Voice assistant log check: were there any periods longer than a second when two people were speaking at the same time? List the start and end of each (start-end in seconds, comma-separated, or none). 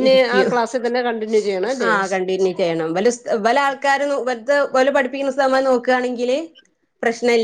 none